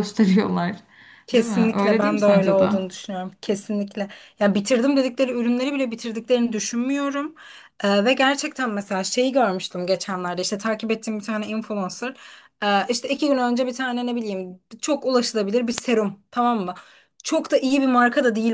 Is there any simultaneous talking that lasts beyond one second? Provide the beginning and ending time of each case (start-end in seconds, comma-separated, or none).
1.3-2.7